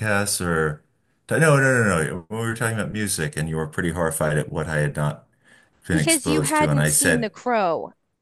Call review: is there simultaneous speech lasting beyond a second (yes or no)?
yes